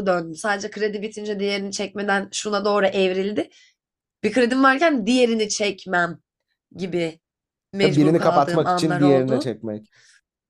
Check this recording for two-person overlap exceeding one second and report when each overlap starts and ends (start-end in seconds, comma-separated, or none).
7.8-9.5